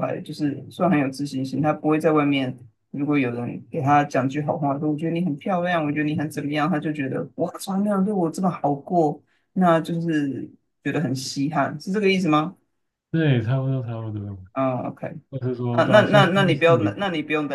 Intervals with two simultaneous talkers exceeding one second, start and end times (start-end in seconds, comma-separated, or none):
15.7-17.0